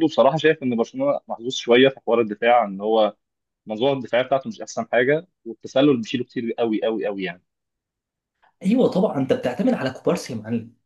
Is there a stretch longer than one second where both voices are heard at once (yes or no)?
no